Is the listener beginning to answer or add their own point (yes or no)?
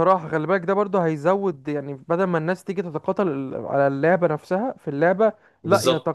no